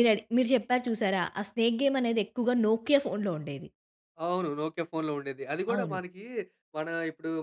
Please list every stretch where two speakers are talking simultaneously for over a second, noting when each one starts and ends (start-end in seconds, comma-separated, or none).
none